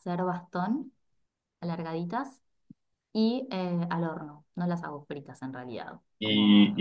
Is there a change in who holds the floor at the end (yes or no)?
yes